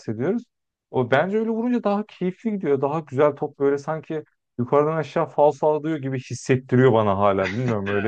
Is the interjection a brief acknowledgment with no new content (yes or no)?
yes